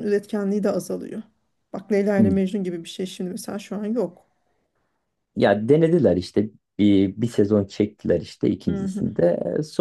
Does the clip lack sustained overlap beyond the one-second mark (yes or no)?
yes